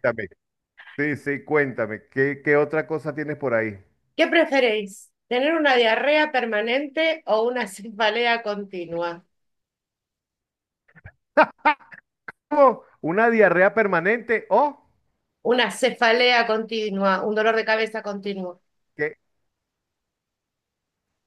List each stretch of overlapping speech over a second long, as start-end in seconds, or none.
none